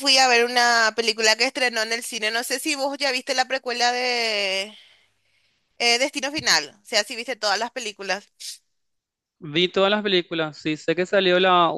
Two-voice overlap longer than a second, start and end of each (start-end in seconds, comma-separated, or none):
none